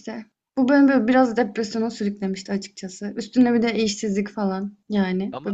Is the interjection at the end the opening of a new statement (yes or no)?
no